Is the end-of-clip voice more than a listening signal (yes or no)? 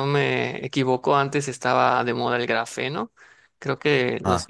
no